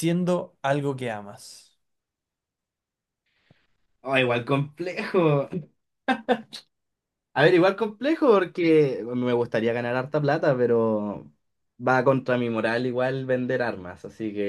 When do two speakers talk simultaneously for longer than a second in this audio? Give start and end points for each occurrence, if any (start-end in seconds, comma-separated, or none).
none